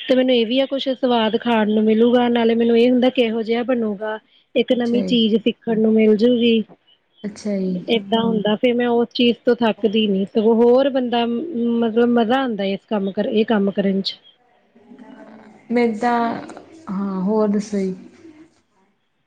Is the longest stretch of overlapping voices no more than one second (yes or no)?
yes